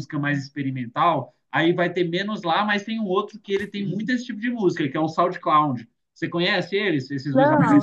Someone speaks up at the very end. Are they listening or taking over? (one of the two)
taking over